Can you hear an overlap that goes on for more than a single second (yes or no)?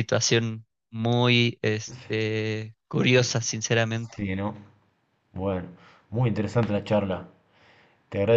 no